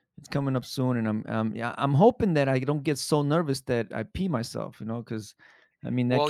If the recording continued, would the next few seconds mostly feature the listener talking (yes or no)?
yes